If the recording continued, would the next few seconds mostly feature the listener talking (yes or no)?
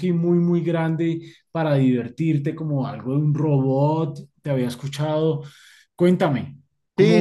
yes